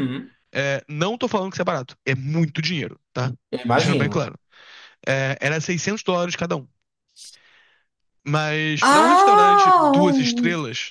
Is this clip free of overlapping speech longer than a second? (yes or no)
no